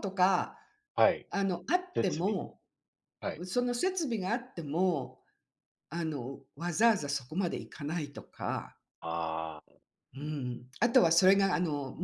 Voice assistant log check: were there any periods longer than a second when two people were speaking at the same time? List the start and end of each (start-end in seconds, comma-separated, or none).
none